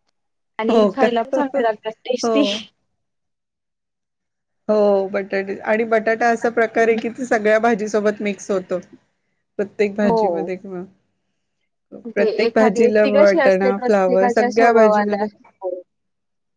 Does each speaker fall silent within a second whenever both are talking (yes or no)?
no